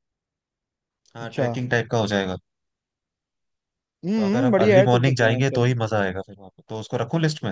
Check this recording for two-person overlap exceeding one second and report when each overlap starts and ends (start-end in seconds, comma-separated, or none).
4.2-5.7